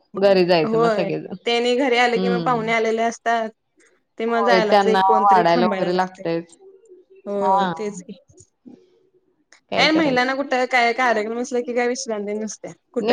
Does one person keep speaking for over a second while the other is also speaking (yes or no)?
yes